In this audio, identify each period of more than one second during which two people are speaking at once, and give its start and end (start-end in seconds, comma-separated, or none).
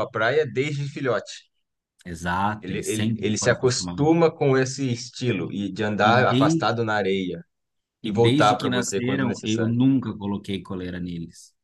2.6-4.2, 8.0-9.8